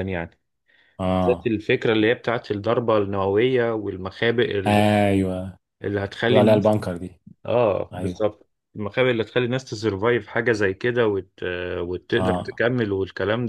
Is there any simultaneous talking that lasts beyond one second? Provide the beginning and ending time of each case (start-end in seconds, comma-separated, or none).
none